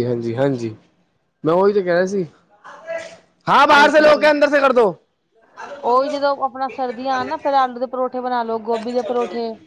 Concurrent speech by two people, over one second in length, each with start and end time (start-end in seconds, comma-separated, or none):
none